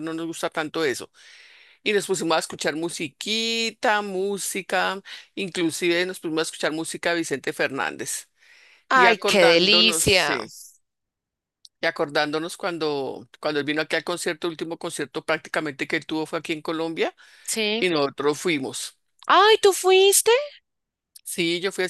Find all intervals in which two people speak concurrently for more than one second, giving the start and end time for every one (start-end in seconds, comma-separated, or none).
8.9-10.4